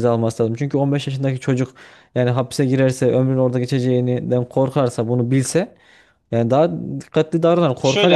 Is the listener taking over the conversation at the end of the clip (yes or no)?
yes